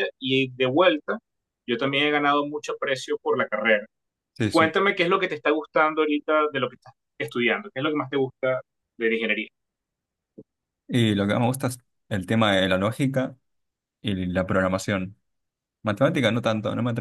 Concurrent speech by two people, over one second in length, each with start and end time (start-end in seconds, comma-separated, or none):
none